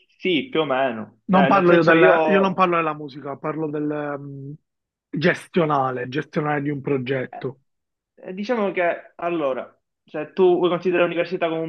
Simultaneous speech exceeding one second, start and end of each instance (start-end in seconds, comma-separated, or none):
1.2-2.7